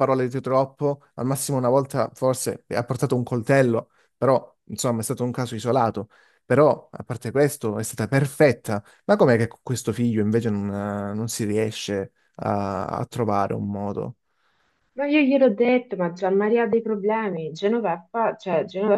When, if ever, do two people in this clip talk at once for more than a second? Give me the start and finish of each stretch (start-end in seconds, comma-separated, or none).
none